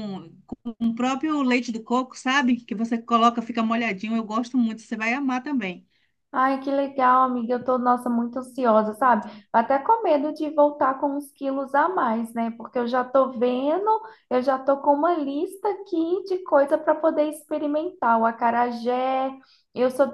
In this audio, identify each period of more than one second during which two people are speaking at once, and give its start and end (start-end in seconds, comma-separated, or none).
none